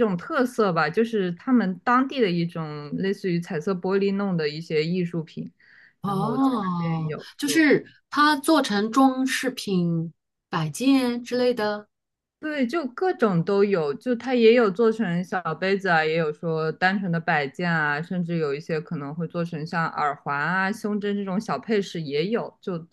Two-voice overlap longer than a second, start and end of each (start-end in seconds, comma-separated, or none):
6.0-7.7